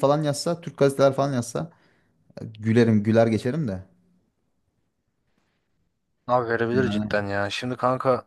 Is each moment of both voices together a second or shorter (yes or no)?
yes